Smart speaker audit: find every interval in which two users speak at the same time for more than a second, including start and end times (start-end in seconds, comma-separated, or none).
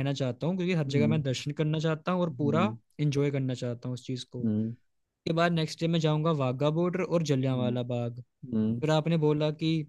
none